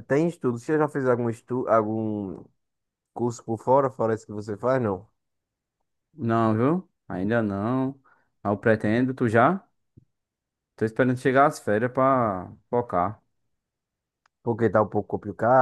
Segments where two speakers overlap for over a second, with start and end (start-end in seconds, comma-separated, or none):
none